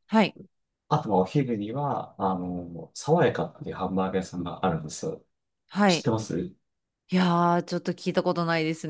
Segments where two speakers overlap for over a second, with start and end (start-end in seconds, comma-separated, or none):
none